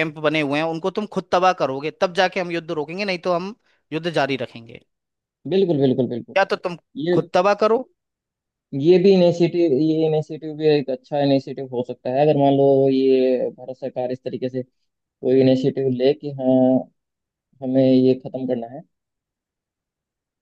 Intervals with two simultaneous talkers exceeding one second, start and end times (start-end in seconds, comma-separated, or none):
none